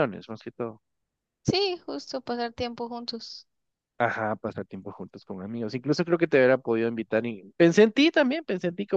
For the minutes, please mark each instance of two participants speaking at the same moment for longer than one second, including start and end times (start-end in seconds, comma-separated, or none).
none